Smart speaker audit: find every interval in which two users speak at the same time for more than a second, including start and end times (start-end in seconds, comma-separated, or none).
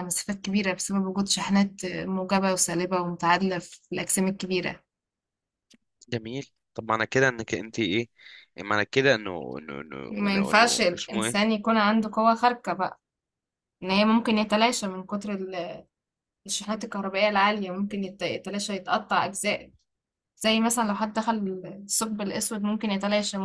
10.1-11.5